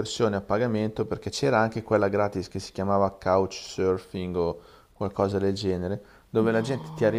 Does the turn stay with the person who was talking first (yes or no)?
yes